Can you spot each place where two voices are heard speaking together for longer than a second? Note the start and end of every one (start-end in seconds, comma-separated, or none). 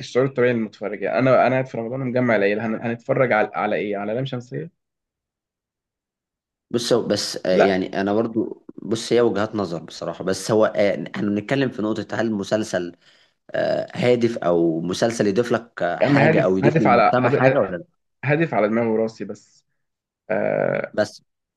16.0-17.6